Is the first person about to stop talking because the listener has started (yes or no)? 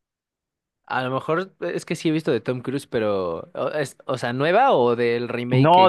yes